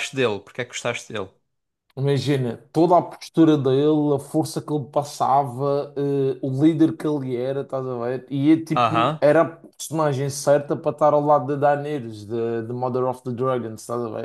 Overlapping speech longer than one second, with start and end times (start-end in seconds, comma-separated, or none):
none